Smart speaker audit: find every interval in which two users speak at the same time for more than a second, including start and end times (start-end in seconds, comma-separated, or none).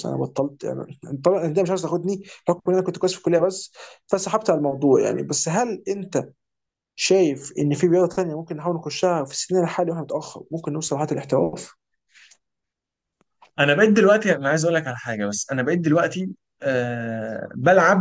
none